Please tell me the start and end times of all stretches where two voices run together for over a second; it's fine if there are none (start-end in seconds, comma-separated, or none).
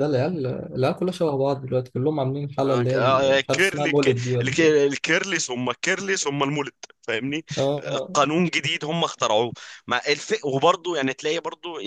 2.6-4.8